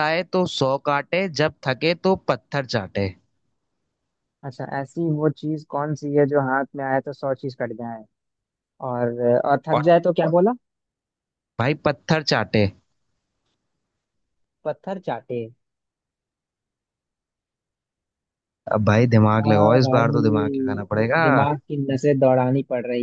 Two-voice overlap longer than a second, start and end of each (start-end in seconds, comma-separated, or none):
19.4-21.2